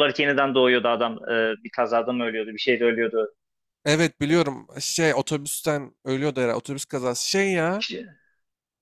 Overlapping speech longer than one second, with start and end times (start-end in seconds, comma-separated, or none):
none